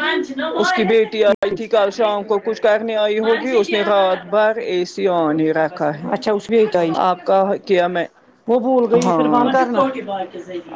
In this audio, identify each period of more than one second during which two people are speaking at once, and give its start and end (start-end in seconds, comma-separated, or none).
none